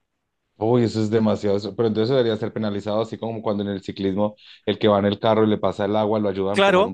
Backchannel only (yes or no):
no